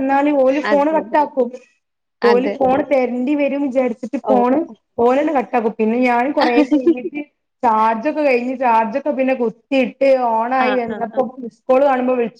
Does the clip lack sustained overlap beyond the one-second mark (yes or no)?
yes